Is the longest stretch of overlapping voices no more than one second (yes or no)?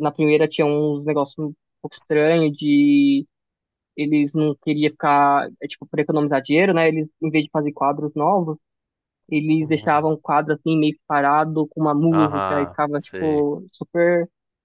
no